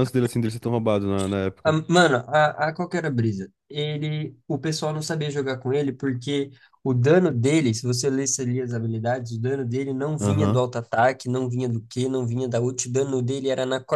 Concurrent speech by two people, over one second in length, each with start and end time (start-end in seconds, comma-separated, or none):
none